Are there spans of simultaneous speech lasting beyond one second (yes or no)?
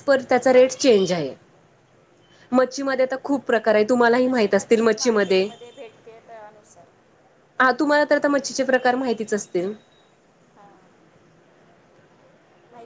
yes